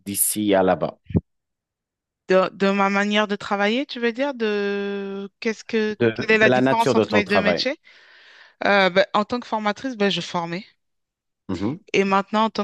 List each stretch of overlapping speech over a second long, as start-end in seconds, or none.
6.0-7.7